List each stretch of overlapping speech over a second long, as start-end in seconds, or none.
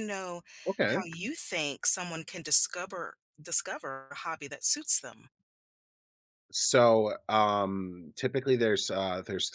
none